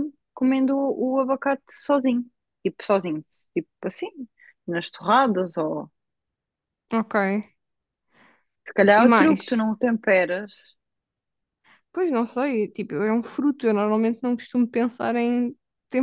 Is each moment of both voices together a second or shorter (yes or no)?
yes